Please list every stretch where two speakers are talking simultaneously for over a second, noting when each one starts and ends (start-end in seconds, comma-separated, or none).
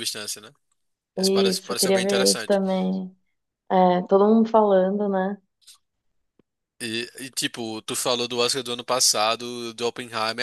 1.2-2.6